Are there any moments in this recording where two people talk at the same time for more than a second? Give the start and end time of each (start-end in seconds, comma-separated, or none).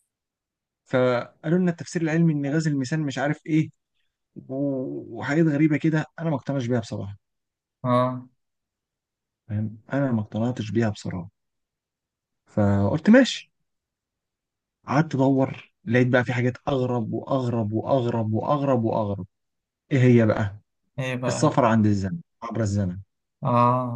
none